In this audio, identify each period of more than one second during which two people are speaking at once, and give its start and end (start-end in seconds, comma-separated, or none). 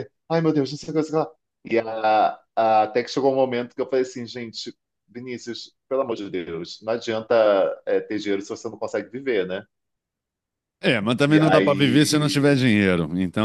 11.3-12.6